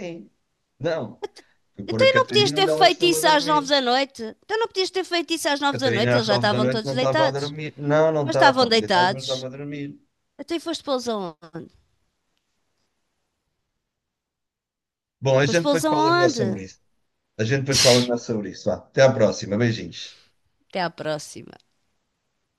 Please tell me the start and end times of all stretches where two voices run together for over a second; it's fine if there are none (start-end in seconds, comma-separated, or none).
1.9-3.7, 5.7-7.5, 8.2-9.5, 15.4-16.6